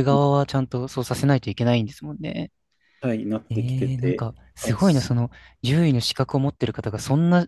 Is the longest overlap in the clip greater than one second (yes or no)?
yes